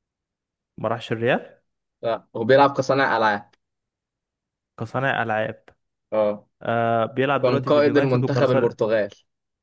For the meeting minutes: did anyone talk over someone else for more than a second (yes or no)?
yes